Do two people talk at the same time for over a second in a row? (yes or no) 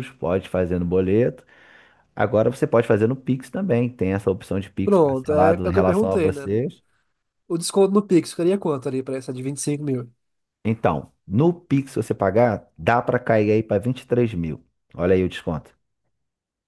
yes